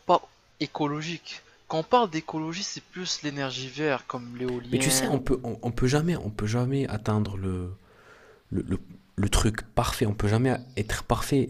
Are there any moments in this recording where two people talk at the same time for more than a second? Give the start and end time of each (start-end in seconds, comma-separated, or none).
none